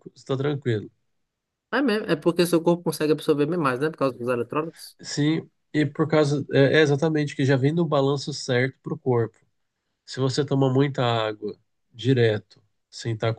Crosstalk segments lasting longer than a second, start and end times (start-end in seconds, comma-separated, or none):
none